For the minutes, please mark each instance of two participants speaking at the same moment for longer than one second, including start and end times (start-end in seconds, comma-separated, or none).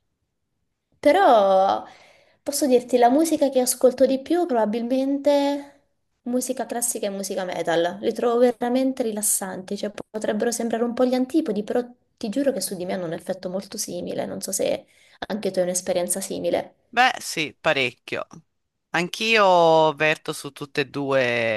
none